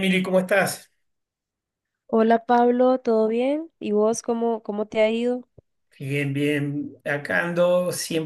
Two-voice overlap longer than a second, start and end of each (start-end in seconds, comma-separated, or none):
none